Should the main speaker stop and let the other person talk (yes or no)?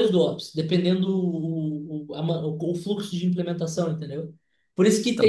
no